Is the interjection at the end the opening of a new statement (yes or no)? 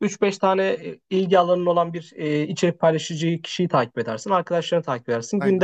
no